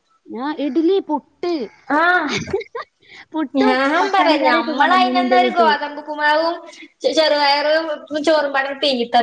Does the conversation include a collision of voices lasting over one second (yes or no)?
yes